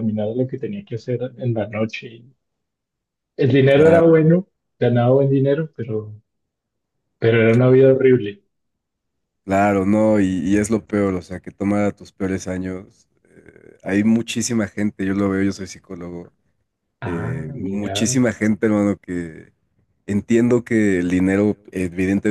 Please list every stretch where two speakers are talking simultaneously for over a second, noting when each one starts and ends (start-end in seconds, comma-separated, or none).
17.0-18.2